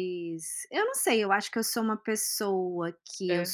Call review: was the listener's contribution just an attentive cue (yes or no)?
yes